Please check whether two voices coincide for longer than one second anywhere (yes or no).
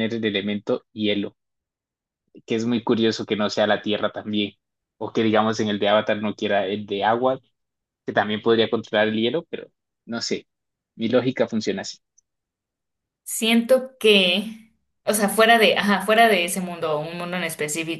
no